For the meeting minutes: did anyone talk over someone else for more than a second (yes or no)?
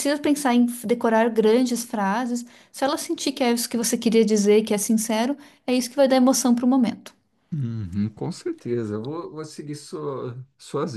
no